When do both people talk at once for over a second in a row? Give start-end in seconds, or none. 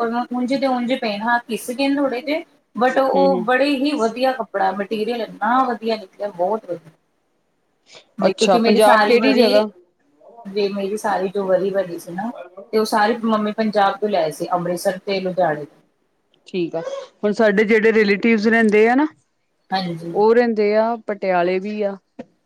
8.3-9.5